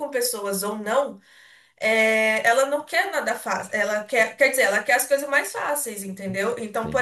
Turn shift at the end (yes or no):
no